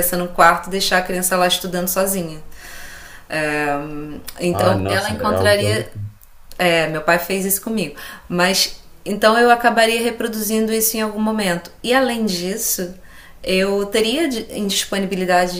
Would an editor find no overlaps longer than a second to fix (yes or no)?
no